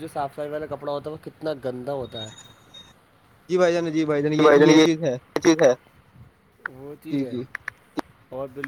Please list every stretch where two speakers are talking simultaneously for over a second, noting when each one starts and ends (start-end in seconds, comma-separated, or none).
none